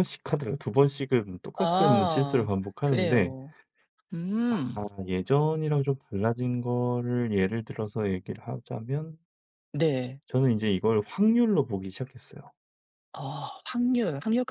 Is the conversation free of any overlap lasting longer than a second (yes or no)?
no